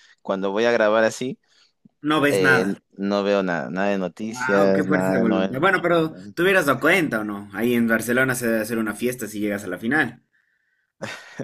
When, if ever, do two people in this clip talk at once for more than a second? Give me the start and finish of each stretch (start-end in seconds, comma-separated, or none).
4.2-5.8